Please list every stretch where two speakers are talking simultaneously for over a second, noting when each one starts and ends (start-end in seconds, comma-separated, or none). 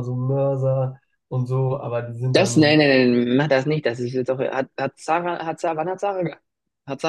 none